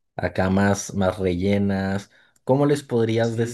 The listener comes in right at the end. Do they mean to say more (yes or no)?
yes